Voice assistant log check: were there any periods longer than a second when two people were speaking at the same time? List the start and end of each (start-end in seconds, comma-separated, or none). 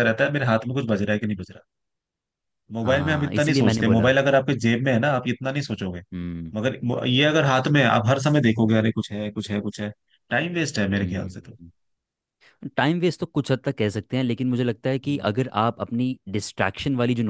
2.8-4.1